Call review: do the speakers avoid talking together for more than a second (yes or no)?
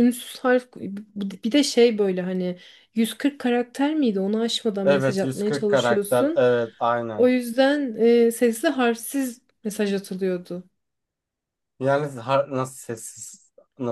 no